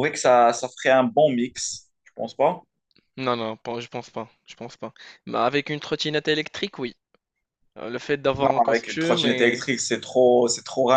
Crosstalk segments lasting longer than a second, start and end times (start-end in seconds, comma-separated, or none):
8.4-9.6